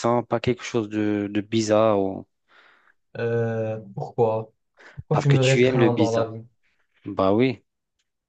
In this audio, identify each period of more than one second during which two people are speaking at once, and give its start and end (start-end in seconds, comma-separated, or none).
5.1-6.3